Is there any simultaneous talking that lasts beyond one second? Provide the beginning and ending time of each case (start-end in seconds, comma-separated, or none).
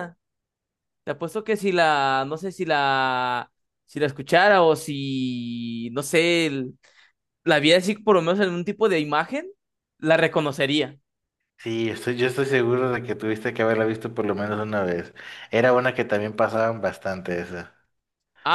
none